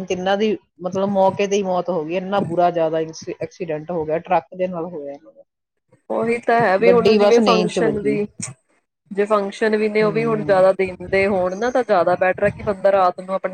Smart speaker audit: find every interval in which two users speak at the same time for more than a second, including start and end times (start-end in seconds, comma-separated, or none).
6.8-8.1